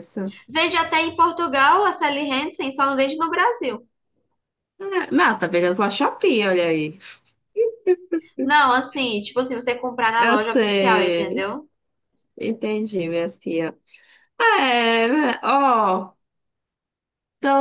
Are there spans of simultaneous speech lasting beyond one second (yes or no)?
yes